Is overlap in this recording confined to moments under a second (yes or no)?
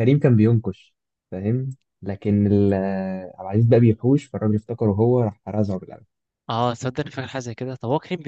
yes